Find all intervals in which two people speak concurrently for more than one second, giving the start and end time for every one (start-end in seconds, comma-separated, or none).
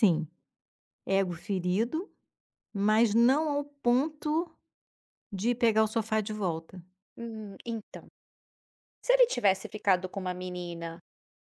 none